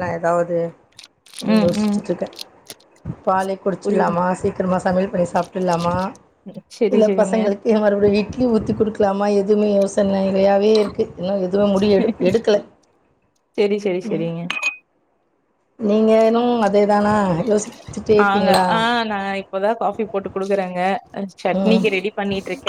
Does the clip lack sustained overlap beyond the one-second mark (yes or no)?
yes